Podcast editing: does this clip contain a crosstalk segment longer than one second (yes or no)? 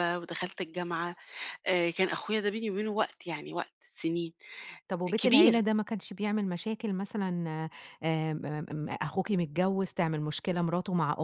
no